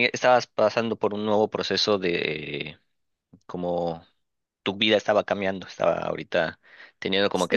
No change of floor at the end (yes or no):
yes